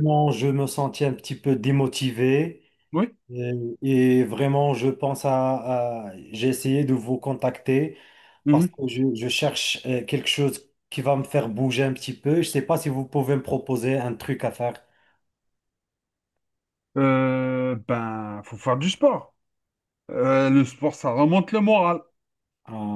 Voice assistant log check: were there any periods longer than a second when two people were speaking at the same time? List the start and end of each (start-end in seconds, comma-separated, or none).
none